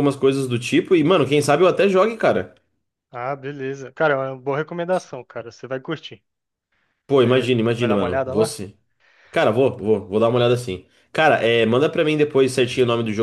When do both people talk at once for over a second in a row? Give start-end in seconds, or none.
7.2-8.6